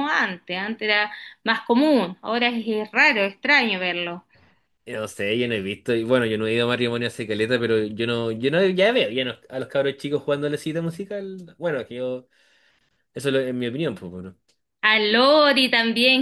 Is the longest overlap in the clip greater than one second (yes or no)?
no